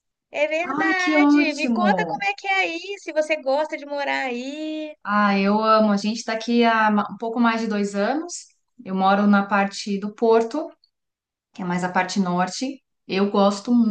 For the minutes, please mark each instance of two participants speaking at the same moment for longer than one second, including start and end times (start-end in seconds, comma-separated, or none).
0.8-2.2